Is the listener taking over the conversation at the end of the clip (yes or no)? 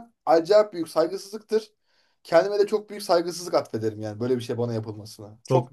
yes